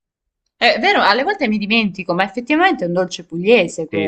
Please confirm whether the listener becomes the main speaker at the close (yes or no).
yes